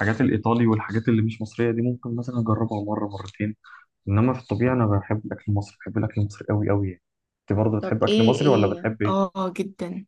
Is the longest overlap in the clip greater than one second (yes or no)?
yes